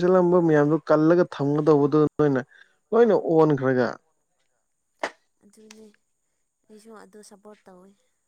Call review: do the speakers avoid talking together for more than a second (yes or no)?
yes